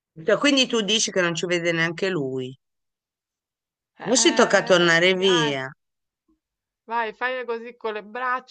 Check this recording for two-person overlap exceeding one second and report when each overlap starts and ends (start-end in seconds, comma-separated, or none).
4.0-5.5